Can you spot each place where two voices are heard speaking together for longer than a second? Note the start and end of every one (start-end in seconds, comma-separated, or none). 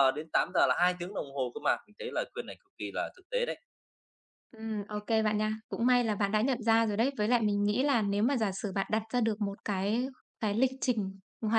none